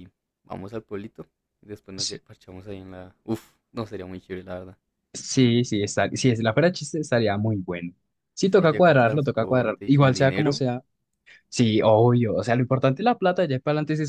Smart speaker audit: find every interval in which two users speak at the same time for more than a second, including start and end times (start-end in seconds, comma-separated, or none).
8.4-10.6